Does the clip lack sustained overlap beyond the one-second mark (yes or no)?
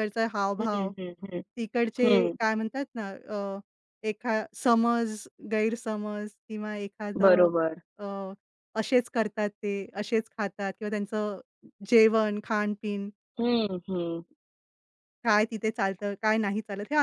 yes